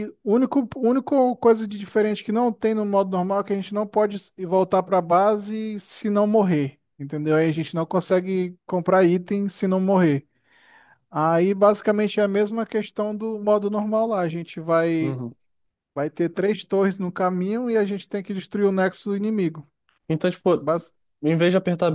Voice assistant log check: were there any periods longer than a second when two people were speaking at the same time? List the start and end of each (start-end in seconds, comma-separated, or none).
none